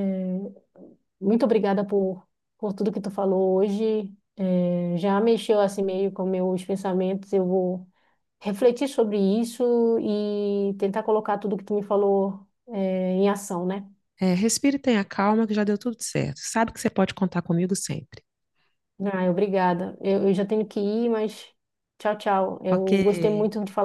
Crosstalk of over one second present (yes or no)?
no